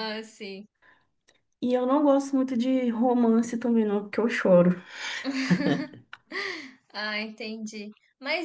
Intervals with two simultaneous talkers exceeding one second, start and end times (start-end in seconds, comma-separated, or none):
none